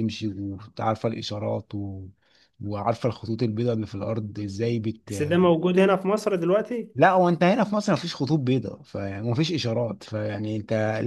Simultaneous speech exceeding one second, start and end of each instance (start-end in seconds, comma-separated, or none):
none